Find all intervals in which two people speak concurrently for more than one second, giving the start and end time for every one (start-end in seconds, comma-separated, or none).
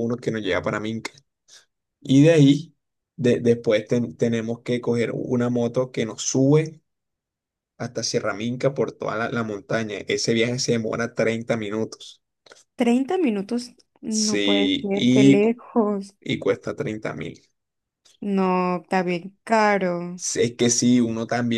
14.1-15.6